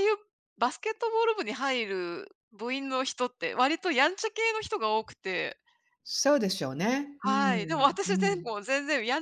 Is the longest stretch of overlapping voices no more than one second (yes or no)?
no